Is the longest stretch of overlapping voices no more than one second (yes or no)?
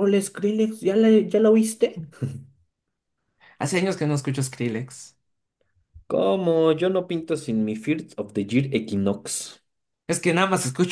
yes